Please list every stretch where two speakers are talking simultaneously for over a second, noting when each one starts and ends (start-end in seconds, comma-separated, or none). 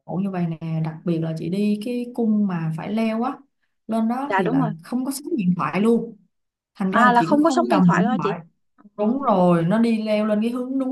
6.9-8.3